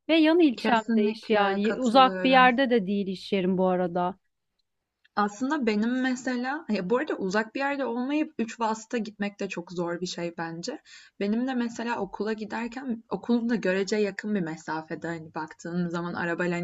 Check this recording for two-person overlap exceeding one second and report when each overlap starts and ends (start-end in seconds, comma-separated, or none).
0.6-2.5